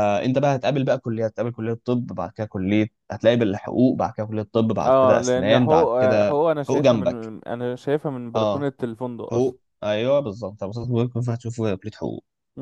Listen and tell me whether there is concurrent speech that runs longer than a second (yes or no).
yes